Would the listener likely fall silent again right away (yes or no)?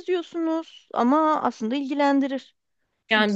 no